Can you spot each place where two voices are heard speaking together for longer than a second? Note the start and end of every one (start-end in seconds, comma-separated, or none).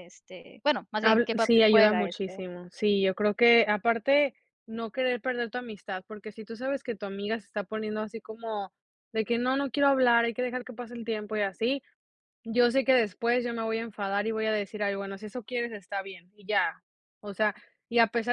1.0-2.4